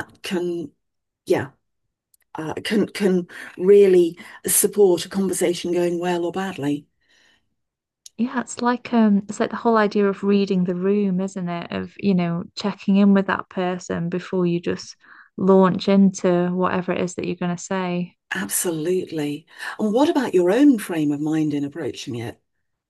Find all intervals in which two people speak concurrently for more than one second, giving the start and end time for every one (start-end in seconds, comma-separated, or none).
none